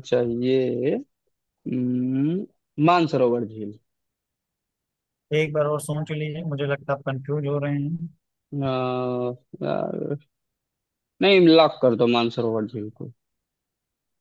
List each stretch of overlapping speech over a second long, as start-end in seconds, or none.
none